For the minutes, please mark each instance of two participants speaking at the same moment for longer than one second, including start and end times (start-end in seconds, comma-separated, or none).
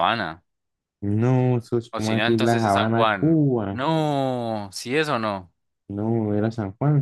1.9-3.8